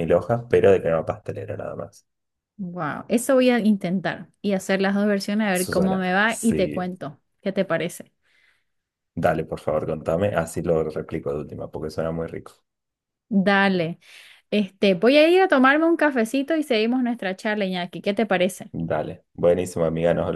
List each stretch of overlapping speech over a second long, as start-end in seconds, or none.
5.5-6.9